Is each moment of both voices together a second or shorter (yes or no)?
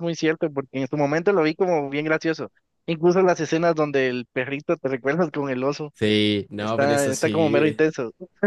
no